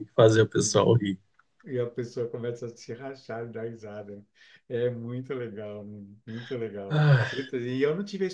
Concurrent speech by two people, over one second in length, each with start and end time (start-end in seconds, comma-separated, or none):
none